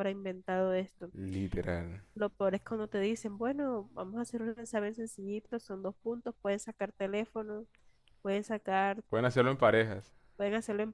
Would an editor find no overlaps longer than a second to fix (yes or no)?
yes